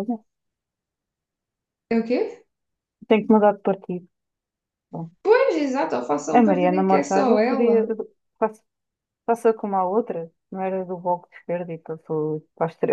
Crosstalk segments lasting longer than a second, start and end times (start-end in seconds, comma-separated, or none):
6.3-7.8